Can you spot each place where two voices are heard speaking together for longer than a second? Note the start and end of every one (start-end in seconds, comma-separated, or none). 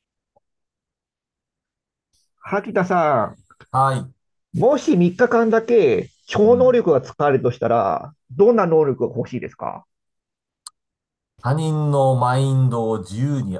none